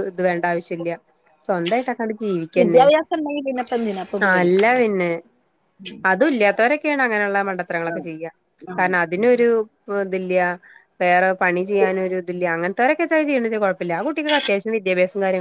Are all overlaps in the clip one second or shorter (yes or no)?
yes